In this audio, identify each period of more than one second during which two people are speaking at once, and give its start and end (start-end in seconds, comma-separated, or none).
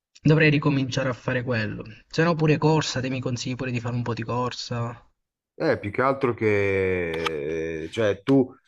none